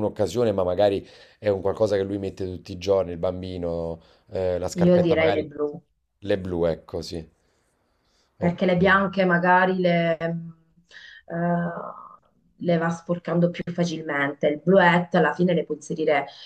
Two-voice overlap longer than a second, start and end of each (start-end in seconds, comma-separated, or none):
none